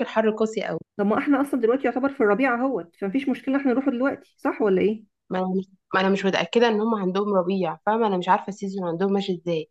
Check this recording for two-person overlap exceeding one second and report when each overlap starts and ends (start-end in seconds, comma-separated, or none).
none